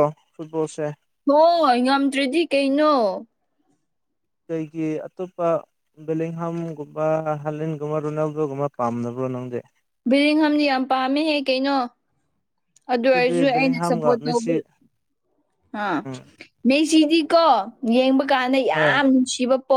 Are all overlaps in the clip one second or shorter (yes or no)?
no